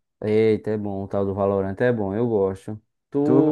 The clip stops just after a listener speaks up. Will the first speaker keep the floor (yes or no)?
no